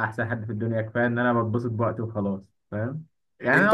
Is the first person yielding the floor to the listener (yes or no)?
no